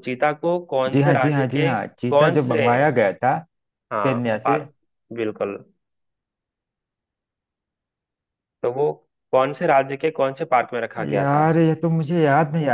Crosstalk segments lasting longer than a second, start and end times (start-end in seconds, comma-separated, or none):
0.9-2.6